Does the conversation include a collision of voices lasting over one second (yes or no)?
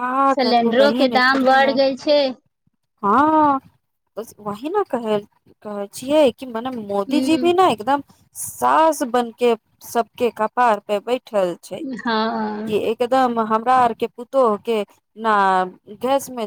no